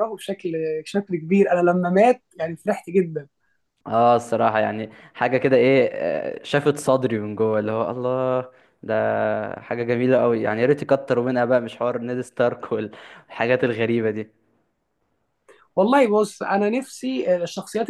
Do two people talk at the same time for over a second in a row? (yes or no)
no